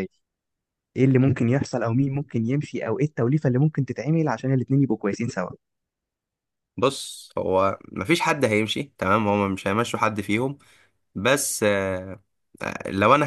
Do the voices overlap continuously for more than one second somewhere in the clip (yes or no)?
no